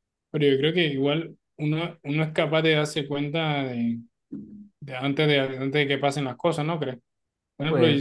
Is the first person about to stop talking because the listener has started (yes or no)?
no